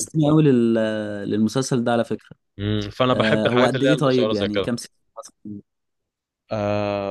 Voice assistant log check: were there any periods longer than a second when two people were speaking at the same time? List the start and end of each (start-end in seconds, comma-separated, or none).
3.1-4.7